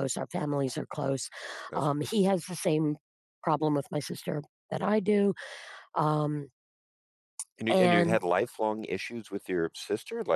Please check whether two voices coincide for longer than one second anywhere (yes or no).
no